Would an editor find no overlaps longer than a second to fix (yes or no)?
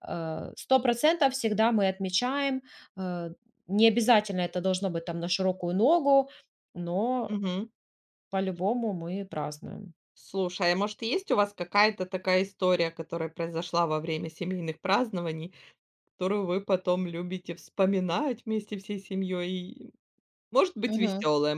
yes